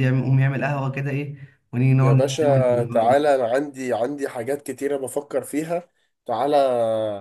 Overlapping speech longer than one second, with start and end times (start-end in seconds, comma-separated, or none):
2.0-3.2